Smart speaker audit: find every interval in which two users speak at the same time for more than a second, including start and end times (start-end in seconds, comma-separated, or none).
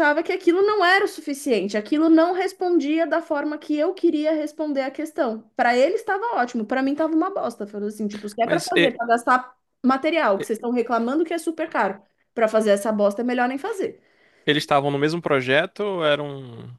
none